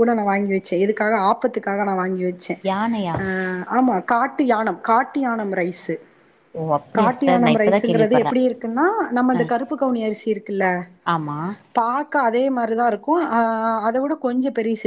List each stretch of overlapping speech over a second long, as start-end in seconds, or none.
7.0-8.3